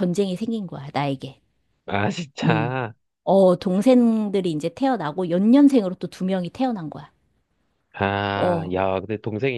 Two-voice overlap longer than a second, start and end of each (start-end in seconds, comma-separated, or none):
none